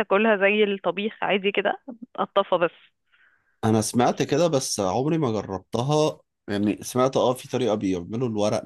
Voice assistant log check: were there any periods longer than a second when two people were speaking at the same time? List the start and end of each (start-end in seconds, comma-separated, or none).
none